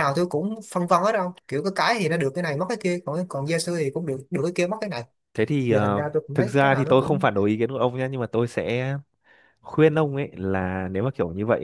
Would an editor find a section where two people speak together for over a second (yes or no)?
yes